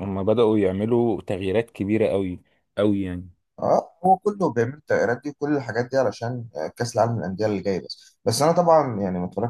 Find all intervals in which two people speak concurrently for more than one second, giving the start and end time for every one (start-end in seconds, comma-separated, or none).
none